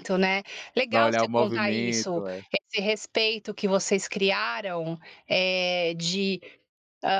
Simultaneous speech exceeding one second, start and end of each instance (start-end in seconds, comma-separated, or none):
0.9-2.2